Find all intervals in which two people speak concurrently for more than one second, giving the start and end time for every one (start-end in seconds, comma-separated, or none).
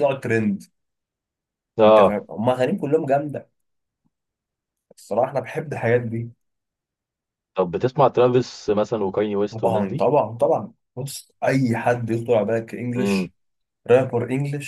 none